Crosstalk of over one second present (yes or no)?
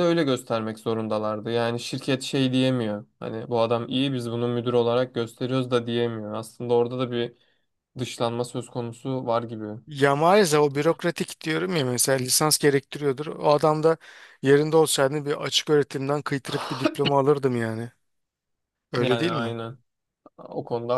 no